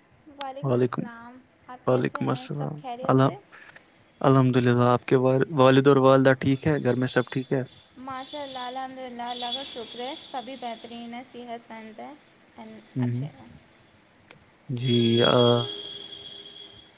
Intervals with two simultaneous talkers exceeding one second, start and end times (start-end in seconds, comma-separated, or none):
1.9-3.4